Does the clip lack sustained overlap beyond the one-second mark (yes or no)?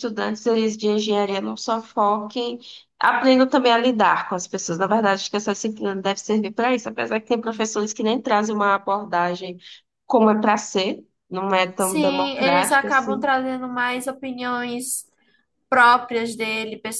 no